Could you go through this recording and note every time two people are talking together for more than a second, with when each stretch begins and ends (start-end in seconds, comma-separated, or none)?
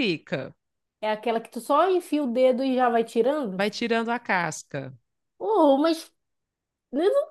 none